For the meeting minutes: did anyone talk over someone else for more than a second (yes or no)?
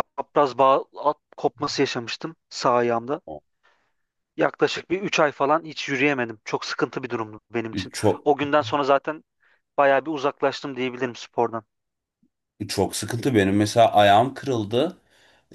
no